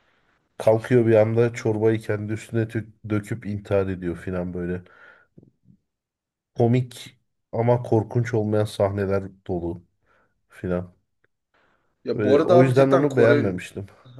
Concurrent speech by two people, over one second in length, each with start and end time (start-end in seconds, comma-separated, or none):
12.1-13.5